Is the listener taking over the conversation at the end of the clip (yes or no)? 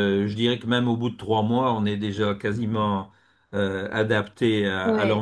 yes